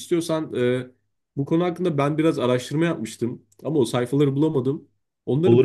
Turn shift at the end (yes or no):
no